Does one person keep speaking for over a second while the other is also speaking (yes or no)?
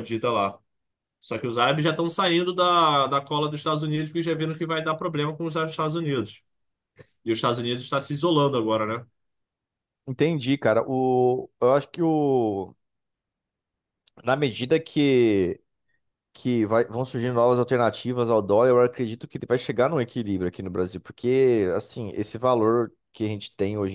no